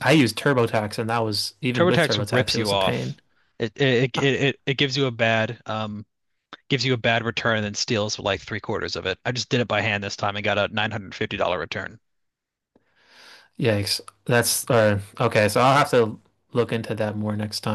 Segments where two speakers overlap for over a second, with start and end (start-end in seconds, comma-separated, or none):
1.7-3.2